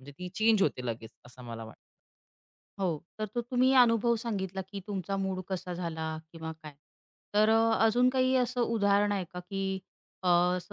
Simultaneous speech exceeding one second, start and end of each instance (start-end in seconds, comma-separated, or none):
none